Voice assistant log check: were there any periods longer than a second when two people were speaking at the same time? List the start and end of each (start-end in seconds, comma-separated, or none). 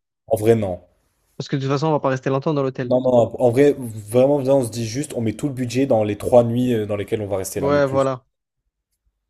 none